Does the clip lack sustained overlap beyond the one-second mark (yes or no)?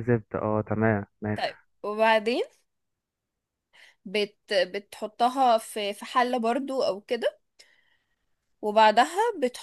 yes